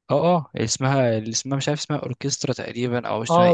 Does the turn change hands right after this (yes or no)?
yes